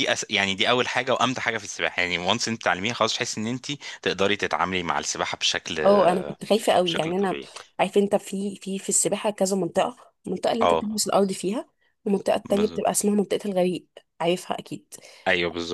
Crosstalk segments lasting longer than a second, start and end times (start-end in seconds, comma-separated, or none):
none